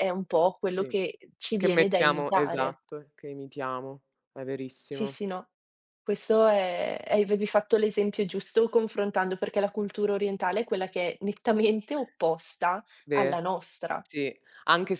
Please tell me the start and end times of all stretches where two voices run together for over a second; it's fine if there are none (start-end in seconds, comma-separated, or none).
1.6-2.8